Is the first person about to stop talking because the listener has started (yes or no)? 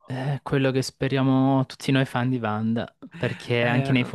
no